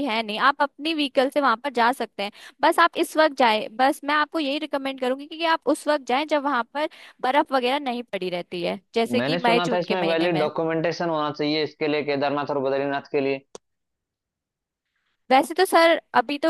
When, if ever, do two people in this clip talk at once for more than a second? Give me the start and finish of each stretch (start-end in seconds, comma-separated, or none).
9.2-10.5